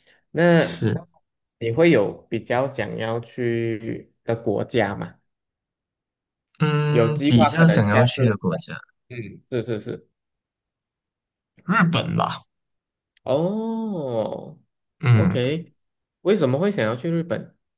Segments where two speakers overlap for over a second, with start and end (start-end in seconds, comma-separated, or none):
6.9-8.2